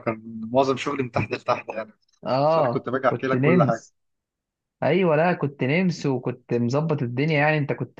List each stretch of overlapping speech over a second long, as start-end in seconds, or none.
2.4-3.9